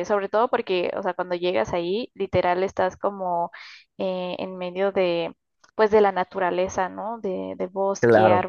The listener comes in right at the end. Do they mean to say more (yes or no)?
no